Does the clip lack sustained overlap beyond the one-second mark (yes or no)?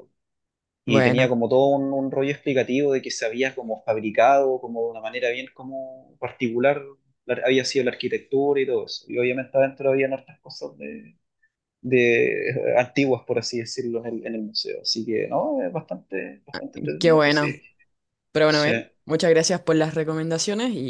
yes